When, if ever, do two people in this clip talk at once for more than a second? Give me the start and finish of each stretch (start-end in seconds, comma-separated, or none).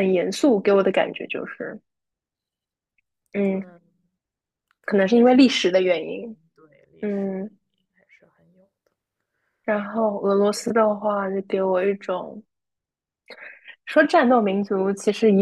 4.8-6.4